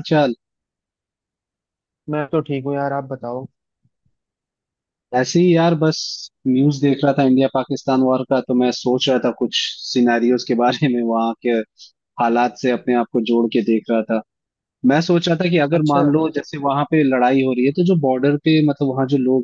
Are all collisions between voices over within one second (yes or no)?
yes